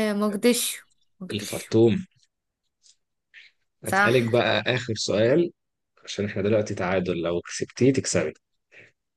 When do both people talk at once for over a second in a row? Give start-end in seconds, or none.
none